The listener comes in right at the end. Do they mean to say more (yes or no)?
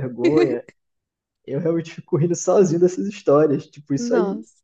no